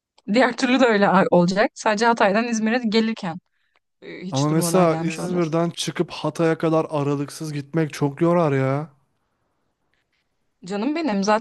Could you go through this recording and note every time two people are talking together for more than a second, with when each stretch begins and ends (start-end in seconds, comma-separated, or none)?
4.3-5.5